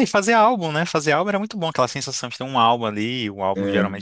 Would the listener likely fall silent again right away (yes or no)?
yes